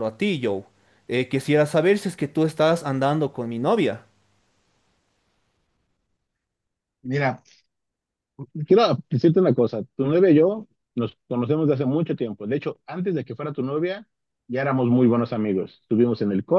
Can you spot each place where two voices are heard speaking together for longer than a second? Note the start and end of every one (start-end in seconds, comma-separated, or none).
none